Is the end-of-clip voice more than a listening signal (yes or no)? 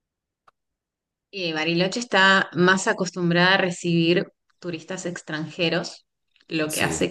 no